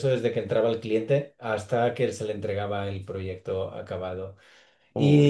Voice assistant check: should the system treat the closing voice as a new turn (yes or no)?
no